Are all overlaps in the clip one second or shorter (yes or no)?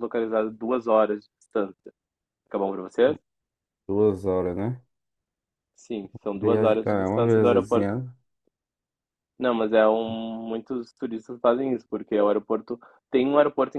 no